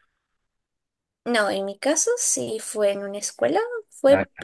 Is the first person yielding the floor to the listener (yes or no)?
no